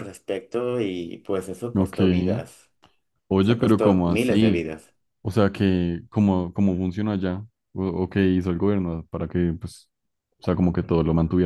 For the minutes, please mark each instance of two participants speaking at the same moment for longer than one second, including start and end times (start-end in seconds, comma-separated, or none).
3.4-4.7